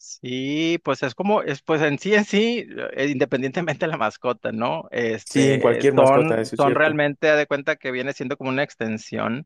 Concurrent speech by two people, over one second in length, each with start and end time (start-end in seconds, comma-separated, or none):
5.2-7.0